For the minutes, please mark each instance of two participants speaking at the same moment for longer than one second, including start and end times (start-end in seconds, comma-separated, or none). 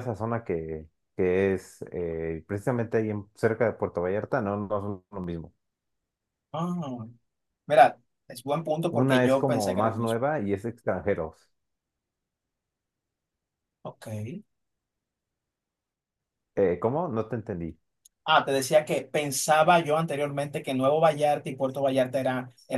9.0-10.2